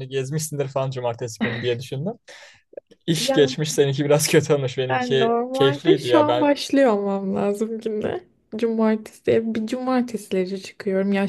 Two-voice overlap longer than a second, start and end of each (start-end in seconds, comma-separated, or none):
4.9-6.5